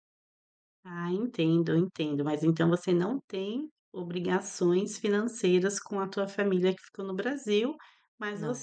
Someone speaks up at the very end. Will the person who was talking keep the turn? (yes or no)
yes